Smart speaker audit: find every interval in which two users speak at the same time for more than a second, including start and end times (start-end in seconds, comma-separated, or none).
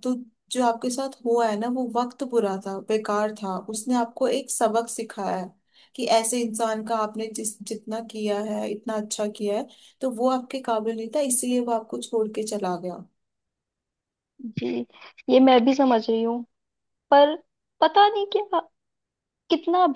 none